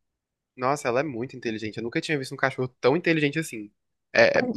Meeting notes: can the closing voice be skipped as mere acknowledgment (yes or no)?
yes